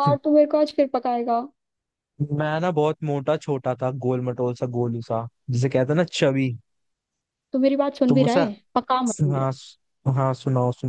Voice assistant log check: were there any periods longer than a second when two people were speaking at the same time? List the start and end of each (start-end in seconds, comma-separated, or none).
none